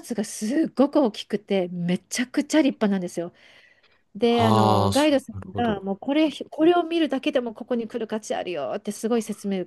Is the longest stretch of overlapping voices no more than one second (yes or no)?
no